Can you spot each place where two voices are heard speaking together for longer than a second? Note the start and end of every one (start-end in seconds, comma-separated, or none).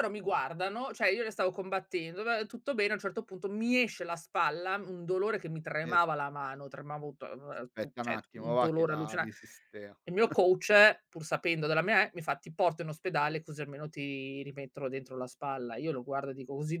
7.7-9.3